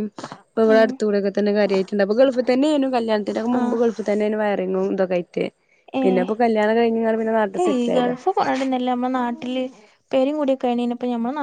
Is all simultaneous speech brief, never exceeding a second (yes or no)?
yes